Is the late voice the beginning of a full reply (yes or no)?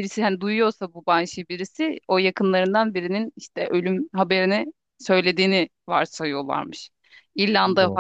no